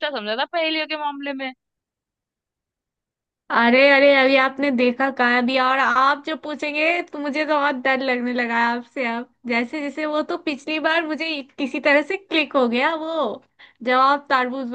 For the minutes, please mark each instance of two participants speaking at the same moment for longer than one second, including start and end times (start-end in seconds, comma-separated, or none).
none